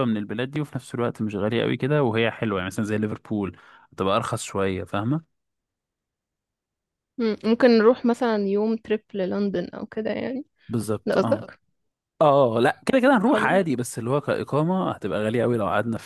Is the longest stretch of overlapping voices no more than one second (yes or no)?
yes